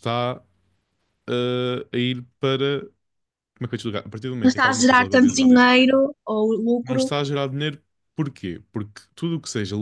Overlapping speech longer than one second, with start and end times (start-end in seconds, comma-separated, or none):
4.4-5.8